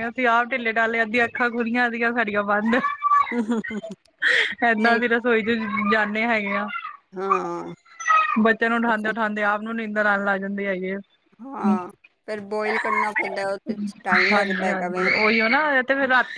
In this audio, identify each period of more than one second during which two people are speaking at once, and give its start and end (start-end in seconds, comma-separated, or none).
none